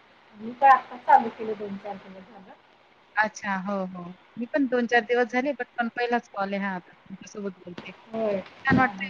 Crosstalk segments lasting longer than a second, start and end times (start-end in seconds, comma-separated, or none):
none